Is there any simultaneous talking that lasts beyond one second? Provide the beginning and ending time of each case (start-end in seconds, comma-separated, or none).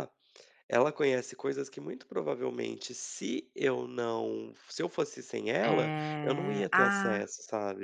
5.6-7.3